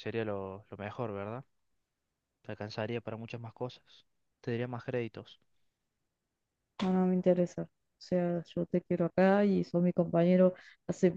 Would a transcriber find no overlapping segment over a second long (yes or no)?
yes